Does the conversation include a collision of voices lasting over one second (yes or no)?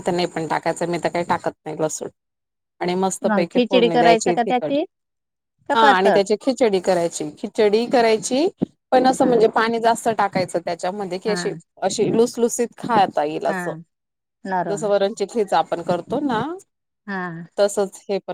yes